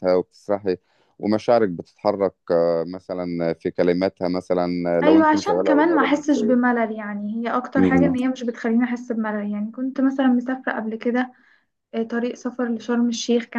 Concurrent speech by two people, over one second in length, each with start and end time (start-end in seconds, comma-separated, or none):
5.0-6.6